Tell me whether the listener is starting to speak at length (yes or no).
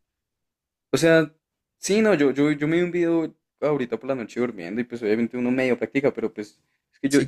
no